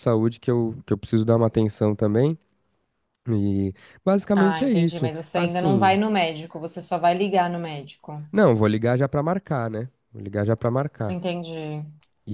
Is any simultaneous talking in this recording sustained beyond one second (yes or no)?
yes